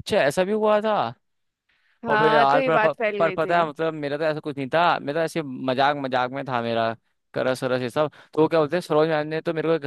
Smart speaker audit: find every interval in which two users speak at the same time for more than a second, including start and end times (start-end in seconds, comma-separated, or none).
2.1-3.6